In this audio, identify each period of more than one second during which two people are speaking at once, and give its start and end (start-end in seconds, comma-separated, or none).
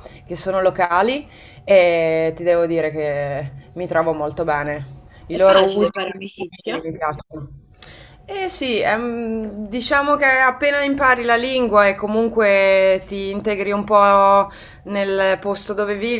5.3-6.9